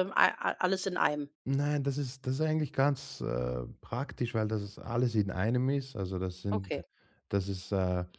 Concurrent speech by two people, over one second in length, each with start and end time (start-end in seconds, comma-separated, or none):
none